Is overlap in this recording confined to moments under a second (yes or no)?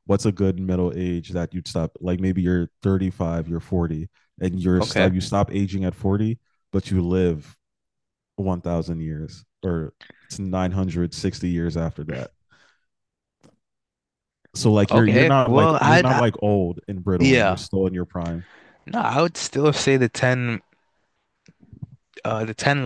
no